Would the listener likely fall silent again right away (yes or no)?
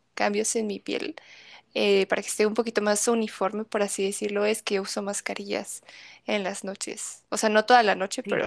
yes